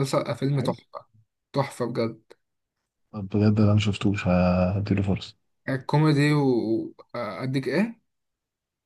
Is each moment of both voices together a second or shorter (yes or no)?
yes